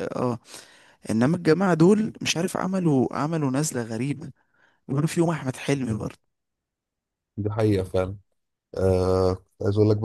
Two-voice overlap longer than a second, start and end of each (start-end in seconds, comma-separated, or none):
none